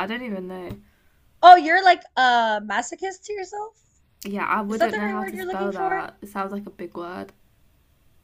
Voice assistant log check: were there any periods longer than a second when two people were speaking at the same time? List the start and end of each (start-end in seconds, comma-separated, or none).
4.7-6.1